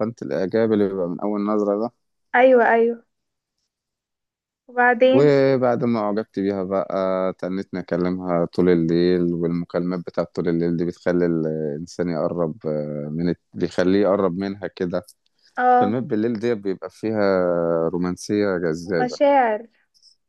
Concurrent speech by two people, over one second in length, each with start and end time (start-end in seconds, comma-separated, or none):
none